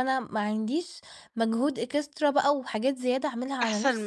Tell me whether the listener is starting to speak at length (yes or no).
yes